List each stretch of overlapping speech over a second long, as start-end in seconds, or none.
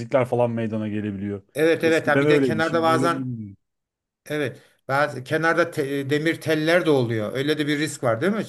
1.8-3.2